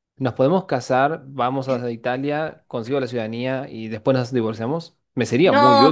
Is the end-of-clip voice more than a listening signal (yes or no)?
yes